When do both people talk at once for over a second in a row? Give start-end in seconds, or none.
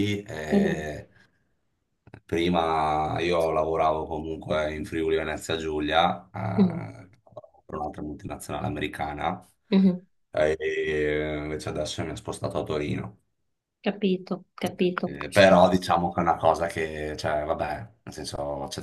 none